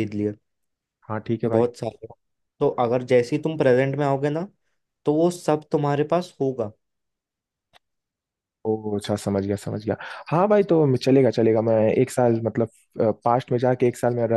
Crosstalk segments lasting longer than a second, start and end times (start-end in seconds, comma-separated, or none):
none